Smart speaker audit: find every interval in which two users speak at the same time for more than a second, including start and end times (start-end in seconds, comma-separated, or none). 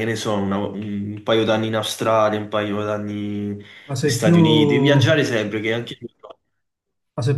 3.9-5.2